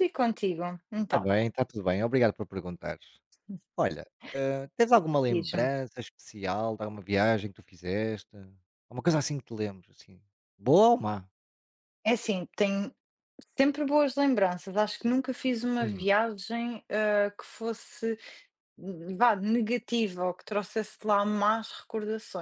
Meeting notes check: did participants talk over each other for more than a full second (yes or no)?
no